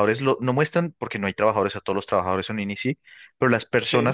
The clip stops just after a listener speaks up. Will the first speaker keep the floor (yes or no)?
yes